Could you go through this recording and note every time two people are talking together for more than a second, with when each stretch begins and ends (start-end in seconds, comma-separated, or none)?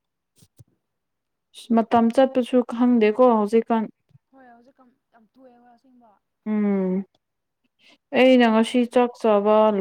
none